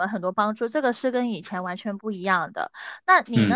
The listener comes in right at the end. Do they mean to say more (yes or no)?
no